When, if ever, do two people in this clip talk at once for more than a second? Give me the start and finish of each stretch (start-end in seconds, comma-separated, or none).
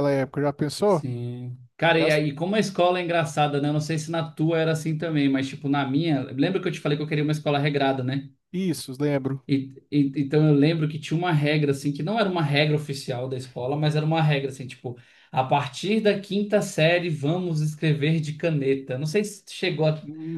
none